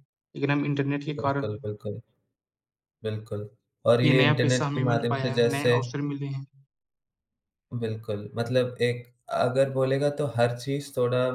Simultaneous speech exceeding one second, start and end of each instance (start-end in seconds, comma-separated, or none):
4.0-5.8